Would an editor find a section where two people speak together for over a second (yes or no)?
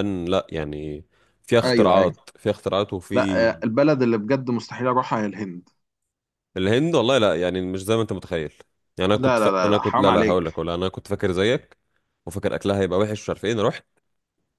yes